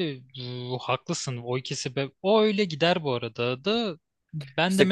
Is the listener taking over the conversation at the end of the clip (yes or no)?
no